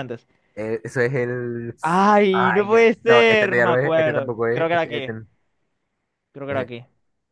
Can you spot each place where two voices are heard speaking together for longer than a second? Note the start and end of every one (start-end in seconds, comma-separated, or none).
2.3-5.1